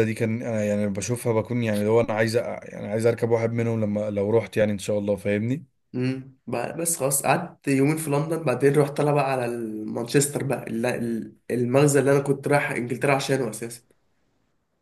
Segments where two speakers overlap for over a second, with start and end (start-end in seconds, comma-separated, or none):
none